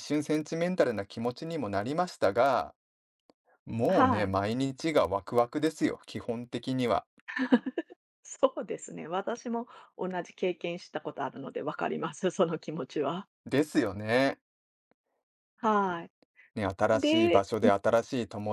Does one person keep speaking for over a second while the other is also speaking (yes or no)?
no